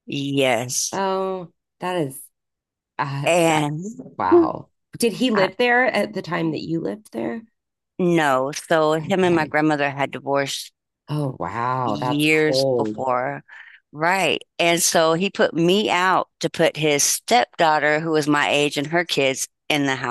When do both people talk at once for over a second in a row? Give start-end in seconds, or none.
11.8-13.1